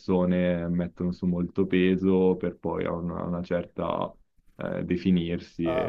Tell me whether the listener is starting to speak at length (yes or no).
yes